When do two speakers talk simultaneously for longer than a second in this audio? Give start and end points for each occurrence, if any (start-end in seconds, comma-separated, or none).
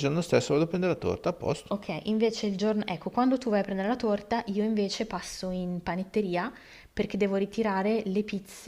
none